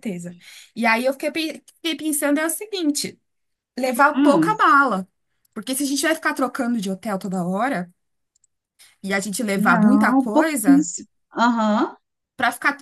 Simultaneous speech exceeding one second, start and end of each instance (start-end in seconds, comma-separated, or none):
9.6-10.9